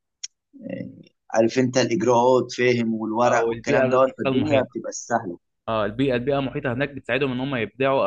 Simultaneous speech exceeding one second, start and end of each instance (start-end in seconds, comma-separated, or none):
3.2-4.8